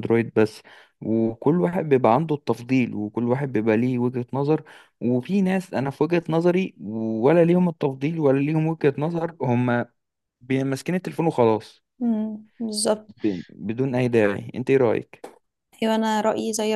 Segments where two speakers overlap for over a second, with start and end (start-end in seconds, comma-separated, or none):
none